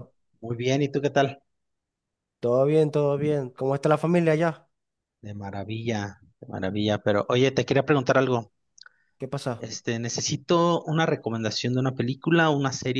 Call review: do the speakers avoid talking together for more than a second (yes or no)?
yes